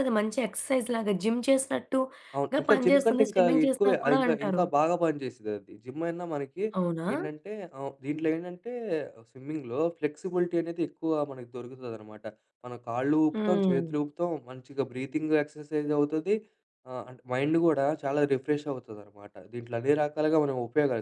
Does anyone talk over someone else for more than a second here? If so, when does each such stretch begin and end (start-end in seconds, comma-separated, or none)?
2.4-4.6